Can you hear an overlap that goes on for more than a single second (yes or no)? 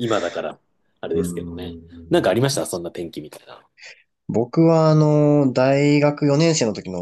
yes